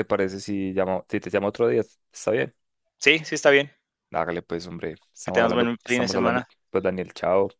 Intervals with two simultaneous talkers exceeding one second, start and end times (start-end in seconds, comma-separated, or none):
5.2-6.5